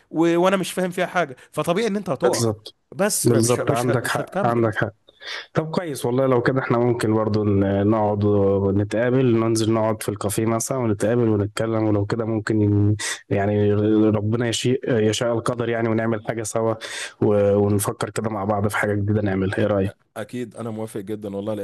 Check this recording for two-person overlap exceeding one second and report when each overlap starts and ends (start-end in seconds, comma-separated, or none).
3.2-4.7